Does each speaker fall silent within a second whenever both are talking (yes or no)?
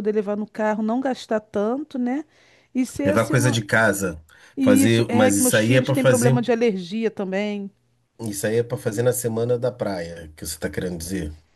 no